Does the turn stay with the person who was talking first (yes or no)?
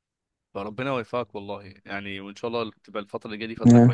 yes